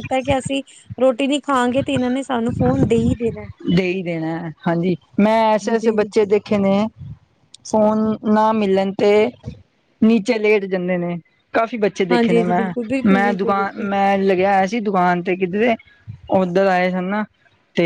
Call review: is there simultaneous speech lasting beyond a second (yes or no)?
yes